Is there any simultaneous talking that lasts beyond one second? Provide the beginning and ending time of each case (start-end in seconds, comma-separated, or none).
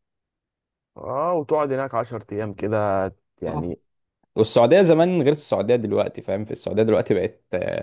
none